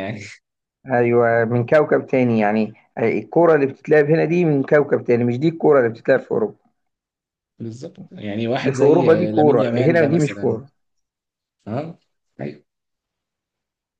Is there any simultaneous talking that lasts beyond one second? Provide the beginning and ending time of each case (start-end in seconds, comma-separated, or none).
8.6-10.6